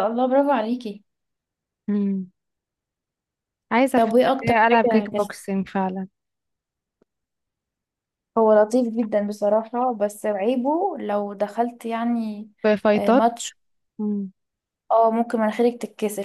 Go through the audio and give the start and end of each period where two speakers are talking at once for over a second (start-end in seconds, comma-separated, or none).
4.0-5.2